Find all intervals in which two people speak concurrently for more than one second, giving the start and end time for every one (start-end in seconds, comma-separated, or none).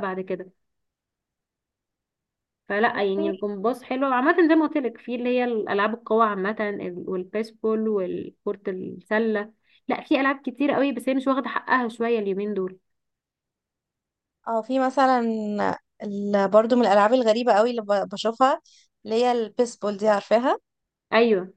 none